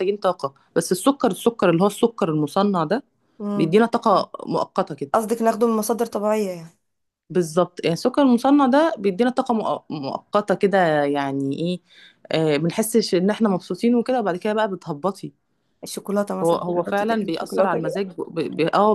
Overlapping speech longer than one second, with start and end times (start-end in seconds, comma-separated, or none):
16.4-18.0